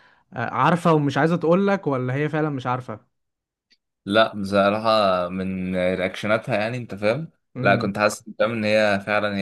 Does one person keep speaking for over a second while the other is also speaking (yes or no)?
no